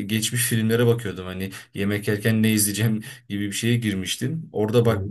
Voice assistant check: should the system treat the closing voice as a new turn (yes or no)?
no